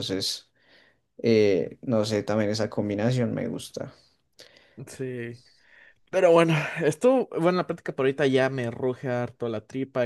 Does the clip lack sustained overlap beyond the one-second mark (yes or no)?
yes